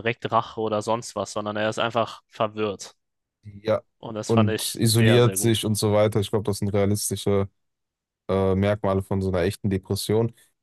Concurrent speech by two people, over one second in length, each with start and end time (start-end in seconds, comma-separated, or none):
4.2-5.7